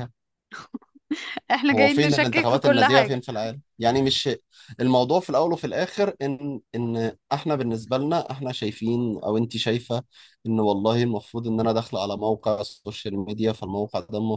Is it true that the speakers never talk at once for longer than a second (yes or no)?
no